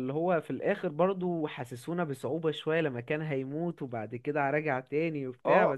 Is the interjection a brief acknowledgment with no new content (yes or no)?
no